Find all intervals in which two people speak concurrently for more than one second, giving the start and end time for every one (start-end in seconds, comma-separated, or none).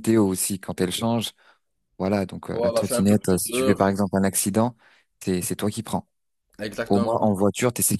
2.5-3.9